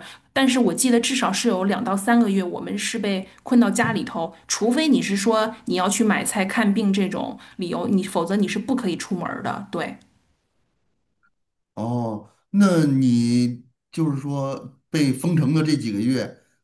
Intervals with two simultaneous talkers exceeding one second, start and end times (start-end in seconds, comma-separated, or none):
none